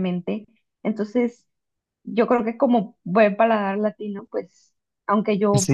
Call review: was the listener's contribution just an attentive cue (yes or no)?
yes